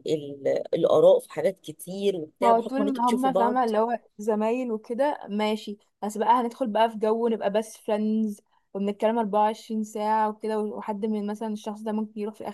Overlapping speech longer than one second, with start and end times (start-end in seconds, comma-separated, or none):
2.4-3.7